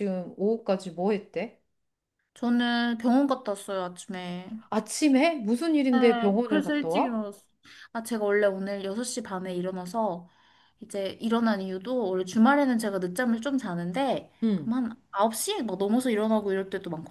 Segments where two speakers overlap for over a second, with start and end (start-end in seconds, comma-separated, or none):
5.9-7.2